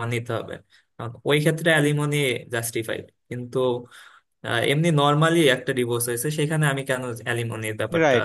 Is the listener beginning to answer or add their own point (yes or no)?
yes